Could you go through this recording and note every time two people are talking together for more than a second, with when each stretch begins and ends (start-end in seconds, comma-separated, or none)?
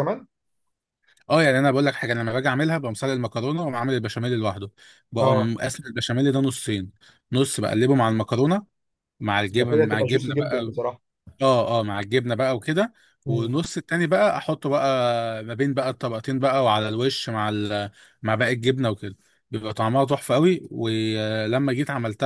9.5-10.7